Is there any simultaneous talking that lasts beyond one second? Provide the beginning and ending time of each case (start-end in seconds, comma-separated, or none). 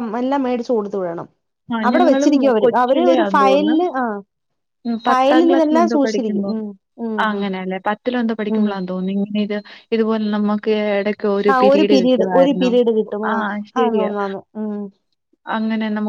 1.9-3.8